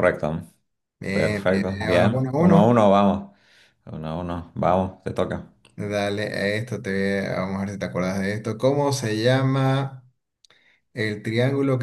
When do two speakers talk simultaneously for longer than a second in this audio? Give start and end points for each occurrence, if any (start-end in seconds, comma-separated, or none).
1.1-2.8